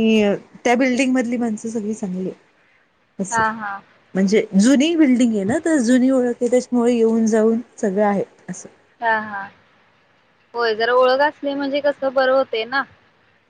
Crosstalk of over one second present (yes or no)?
no